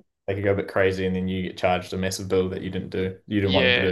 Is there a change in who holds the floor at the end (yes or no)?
yes